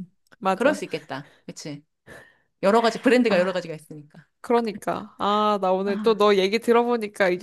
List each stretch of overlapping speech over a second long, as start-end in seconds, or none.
none